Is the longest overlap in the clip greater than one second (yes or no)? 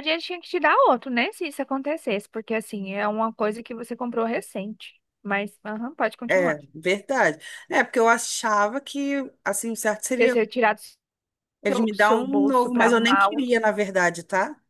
yes